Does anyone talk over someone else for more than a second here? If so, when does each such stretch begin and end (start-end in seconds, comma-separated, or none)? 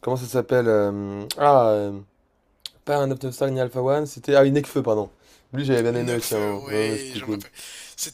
5.9-7.4